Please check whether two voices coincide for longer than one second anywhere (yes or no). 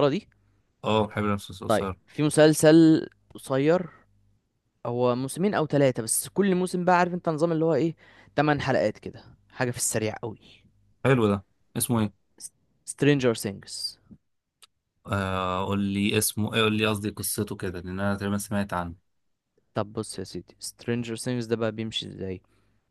no